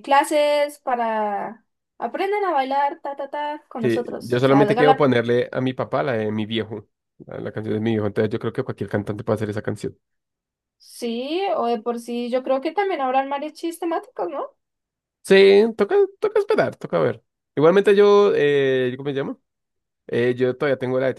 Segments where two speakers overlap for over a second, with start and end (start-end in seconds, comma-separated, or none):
3.8-5.1